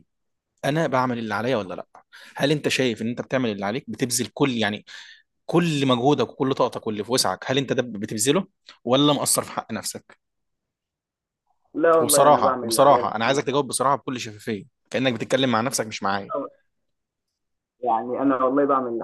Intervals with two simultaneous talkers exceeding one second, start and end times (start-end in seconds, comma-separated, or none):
12.0-13.4